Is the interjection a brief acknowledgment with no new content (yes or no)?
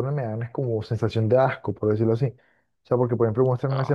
yes